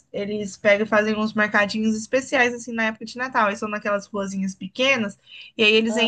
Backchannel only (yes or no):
yes